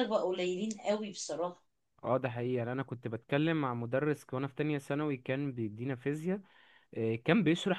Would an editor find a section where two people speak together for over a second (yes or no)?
no